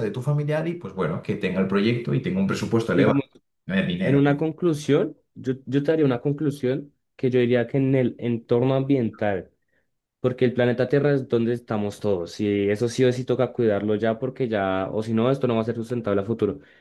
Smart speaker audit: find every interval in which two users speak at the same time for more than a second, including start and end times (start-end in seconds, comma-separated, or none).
none